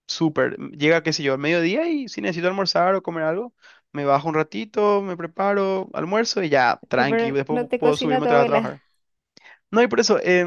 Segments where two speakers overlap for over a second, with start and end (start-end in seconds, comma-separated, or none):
7.0-8.8